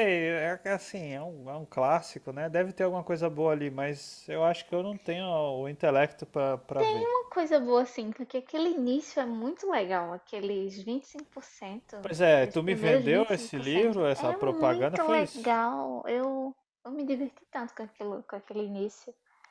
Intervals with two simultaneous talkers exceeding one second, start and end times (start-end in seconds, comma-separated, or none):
12.4-15.6